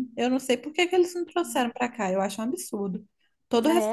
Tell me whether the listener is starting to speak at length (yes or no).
yes